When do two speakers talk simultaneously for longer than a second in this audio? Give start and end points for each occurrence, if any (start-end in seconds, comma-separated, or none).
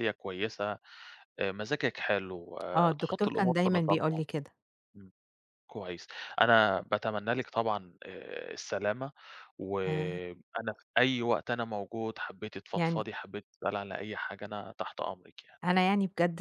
3.0-4.2